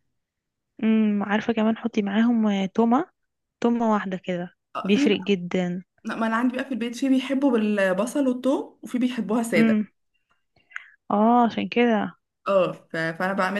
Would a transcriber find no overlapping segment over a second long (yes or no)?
yes